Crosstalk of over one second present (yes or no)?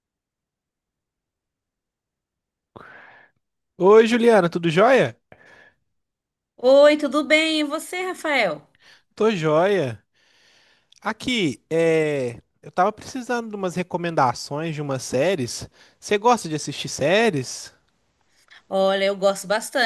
no